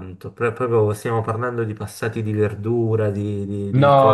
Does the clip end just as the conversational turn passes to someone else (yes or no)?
yes